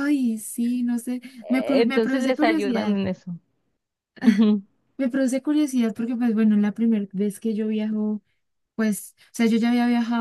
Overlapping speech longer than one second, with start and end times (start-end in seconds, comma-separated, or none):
1.4-3.0